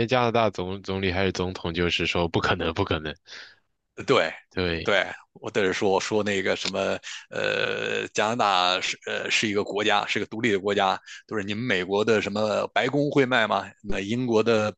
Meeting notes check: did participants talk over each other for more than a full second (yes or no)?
no